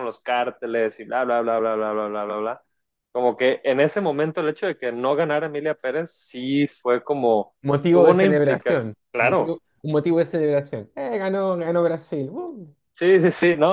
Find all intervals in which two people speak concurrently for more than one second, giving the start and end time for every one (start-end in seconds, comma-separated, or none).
7.9-9.6